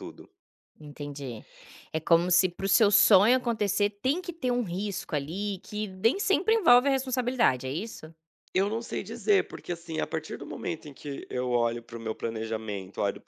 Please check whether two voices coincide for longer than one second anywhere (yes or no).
no